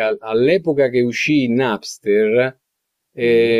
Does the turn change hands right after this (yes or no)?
no